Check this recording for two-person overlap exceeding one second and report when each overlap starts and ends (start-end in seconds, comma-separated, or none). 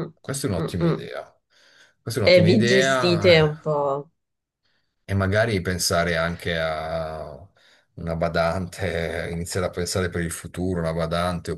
2.3-3.8